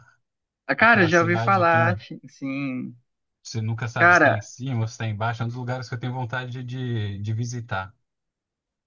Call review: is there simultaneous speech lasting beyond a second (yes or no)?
yes